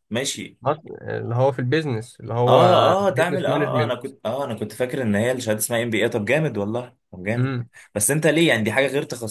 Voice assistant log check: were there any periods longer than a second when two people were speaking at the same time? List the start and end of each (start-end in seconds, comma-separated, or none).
2.4-4.0